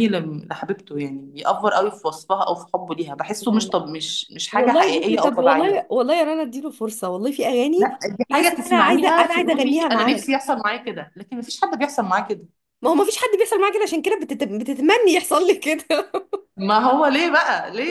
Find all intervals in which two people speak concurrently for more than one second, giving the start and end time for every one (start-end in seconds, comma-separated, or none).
4.5-5.9, 8.3-10.2